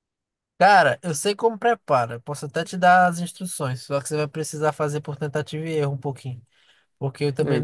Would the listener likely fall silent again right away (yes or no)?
yes